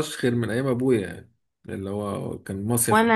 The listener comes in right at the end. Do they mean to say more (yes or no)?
yes